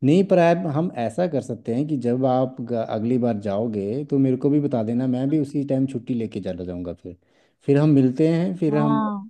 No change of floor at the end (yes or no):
yes